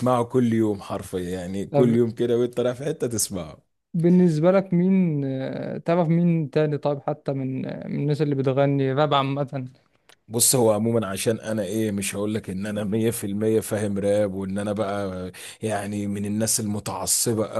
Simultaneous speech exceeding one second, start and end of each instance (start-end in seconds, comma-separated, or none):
none